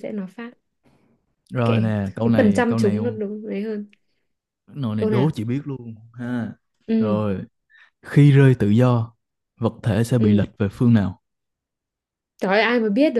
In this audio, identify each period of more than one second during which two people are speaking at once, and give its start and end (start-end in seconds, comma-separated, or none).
1.6-3.2